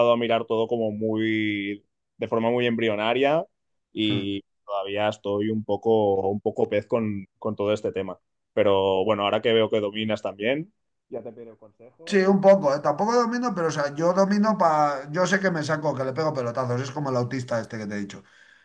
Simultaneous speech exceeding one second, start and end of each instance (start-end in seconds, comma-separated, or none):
none